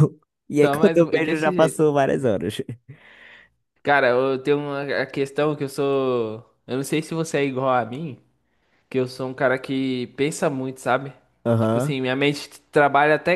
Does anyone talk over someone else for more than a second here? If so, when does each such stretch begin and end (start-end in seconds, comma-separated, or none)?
0.6-1.9